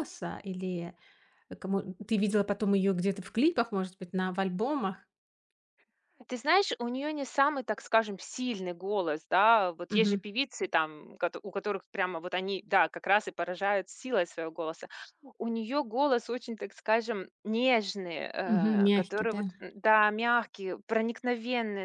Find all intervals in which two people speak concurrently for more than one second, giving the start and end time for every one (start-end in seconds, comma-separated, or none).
none